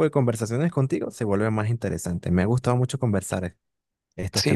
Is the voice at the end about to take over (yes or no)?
yes